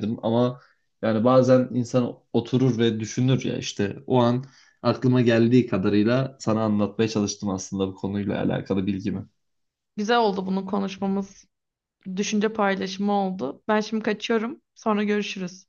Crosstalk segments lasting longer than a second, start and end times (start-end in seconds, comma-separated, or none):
none